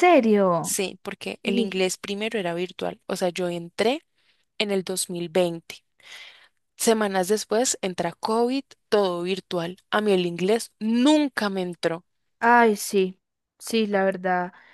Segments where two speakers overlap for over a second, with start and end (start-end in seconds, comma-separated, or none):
none